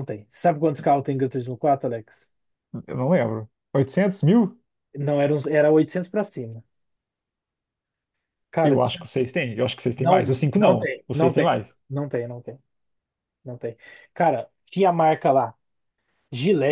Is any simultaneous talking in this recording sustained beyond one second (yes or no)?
yes